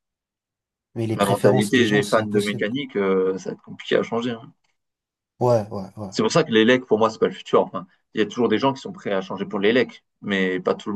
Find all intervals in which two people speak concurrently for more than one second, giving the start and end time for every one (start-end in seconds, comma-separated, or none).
1.1-2.6